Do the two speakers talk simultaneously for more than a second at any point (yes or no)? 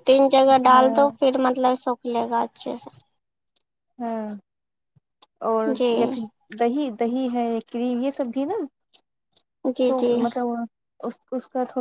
no